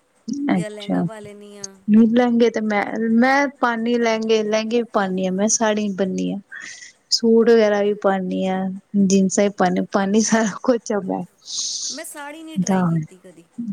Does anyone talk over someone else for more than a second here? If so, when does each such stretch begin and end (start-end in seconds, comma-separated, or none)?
none